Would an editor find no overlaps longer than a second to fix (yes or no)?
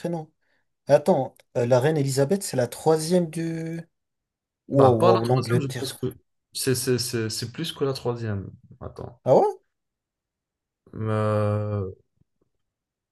no